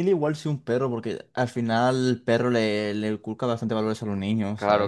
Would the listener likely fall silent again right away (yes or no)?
no